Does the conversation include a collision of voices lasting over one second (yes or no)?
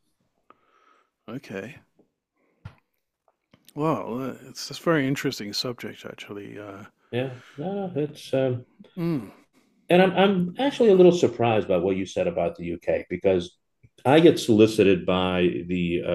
no